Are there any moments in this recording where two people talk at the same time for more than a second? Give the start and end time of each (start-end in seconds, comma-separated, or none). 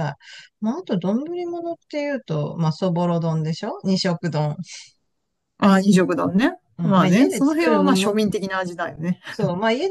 6.8-8.2